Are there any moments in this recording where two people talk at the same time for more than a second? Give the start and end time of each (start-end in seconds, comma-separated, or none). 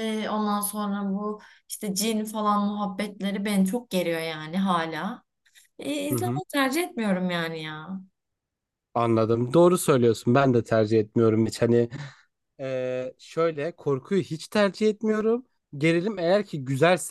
none